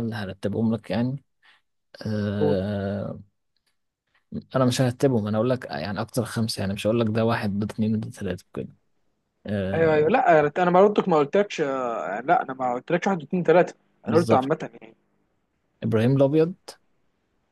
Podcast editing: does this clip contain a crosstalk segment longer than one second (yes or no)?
no